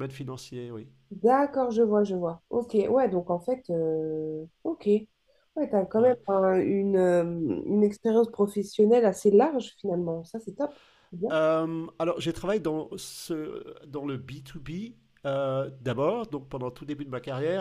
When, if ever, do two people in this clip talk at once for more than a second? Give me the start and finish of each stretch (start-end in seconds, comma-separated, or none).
none